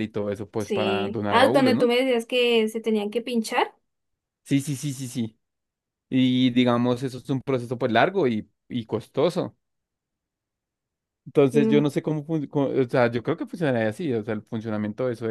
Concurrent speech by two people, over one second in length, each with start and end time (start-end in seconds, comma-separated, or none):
0.6-1.9